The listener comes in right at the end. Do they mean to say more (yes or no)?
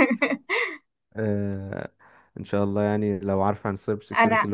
no